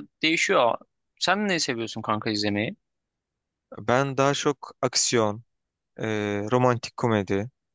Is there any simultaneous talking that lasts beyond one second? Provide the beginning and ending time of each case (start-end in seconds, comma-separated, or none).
none